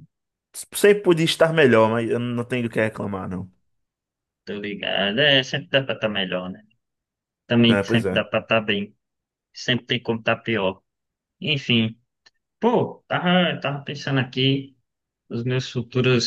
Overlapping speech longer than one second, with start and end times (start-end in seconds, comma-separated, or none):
none